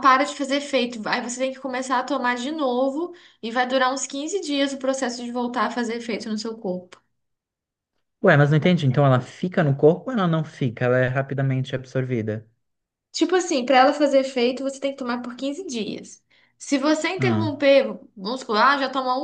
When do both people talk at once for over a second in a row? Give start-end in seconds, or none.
none